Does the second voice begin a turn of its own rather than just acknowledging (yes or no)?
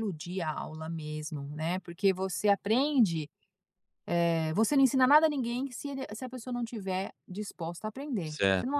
yes